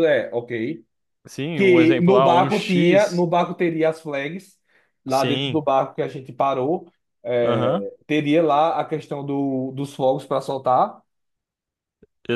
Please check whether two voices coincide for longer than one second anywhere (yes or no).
yes